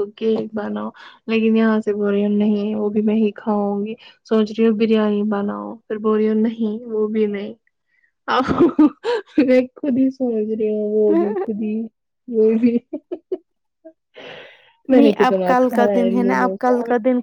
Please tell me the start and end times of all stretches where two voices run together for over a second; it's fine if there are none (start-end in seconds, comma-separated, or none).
14.9-16.7